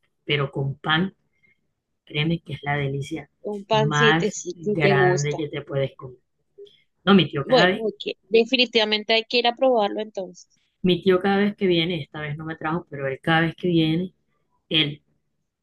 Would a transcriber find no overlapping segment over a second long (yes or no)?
no